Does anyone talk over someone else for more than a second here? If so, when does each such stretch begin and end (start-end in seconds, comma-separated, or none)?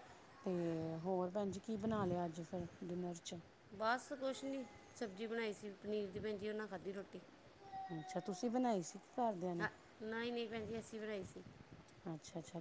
none